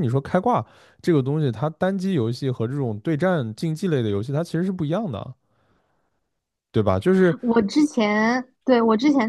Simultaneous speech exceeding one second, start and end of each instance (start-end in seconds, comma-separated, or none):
none